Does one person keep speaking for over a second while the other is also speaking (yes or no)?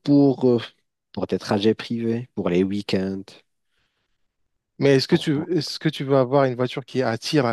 no